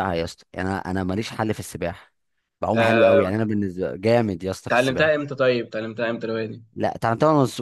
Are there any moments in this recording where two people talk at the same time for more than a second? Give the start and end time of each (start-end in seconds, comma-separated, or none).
none